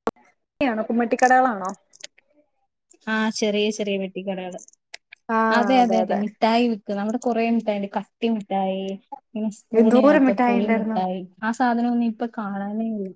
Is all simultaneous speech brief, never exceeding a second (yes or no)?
no